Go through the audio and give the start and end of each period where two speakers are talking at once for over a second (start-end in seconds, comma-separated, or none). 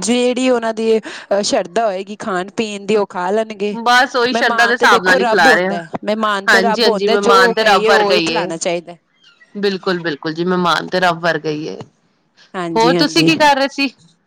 4.3-5.8